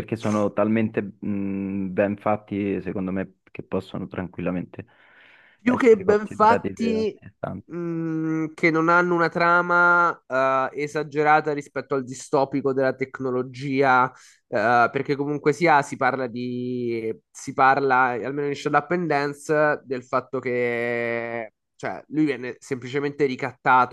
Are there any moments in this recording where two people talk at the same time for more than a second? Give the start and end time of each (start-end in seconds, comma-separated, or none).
5.6-7.2